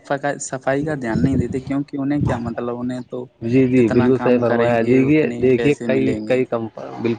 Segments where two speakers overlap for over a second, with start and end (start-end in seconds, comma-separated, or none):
3.8-6.3